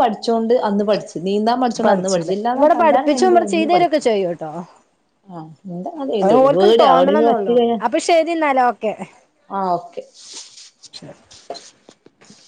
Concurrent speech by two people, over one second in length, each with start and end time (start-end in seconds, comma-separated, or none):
1.9-4.1, 6.2-7.8